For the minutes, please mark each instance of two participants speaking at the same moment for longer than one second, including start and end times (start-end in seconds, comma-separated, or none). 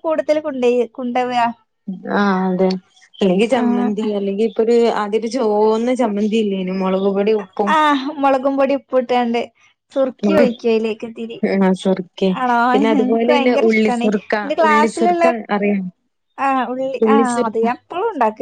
13.0-15.3